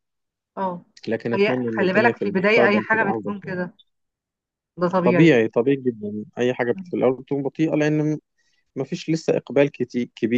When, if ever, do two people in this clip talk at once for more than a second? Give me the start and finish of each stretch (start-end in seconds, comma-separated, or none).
1.3-3.6